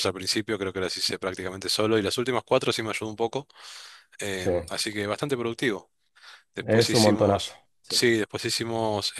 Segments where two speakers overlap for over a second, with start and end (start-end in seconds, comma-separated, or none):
6.7-8.1